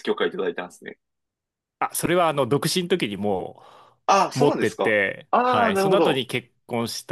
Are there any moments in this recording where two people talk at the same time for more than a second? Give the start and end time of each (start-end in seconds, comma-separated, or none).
4.3-6.2